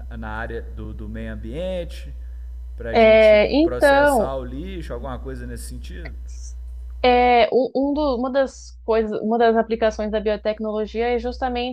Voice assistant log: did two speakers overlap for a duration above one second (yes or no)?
yes